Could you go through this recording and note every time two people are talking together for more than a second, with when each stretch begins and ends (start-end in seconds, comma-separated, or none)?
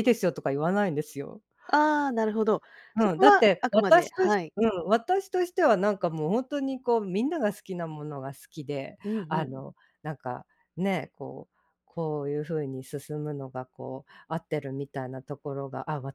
3.0-4.5